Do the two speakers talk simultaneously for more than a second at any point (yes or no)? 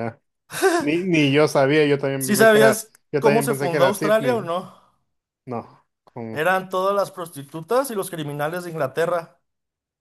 yes